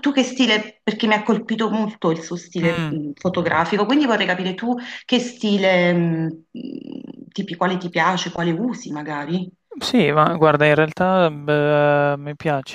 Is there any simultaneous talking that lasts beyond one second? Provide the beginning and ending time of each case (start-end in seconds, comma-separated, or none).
none